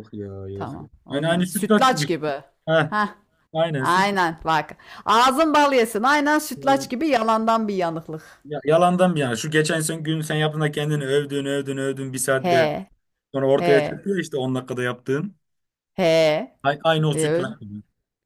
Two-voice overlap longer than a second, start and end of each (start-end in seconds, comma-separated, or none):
0.5-2.1